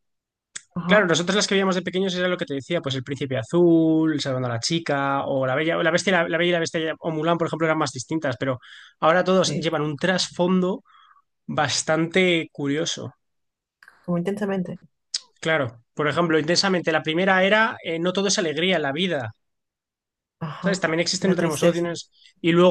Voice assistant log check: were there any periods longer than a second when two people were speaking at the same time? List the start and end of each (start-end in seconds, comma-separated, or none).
20.6-22.0